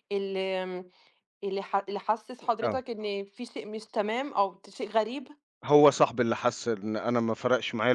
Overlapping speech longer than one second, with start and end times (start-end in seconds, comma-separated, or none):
none